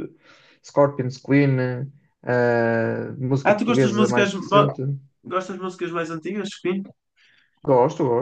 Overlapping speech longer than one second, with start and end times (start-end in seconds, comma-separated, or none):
3.4-4.7